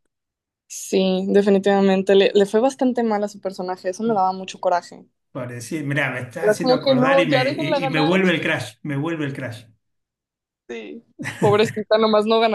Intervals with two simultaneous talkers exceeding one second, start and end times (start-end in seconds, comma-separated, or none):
6.4-8.2